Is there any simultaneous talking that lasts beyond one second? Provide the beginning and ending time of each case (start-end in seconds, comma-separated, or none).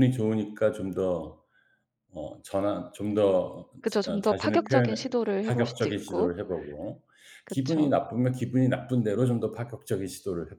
4.2-6.3